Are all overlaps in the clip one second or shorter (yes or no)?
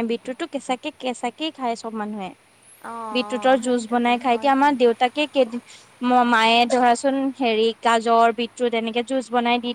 no